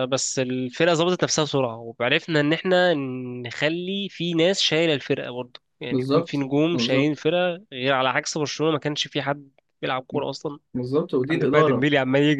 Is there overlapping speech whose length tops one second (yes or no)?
yes